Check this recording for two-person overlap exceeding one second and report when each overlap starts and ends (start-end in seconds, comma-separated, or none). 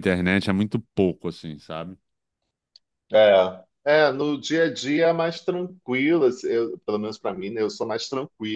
none